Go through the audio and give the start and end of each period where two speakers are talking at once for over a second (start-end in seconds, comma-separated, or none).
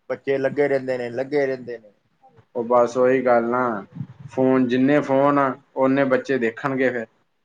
none